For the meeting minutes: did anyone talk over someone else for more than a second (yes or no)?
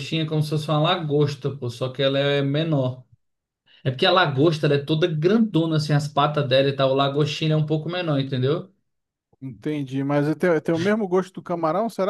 no